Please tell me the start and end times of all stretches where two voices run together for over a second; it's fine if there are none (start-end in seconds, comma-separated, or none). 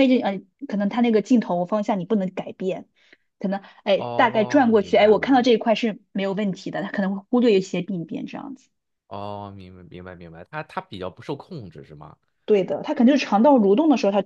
4.0-5.5